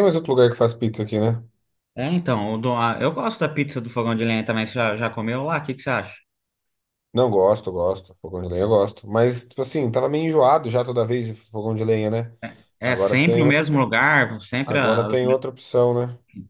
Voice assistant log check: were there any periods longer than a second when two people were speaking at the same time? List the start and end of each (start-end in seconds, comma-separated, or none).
none